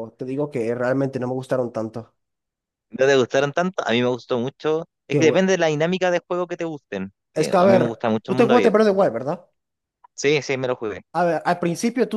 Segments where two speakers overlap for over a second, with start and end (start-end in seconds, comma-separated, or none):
7.4-9.0